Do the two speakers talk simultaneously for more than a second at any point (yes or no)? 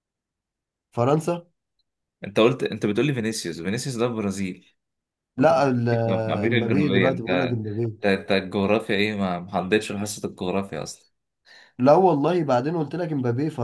yes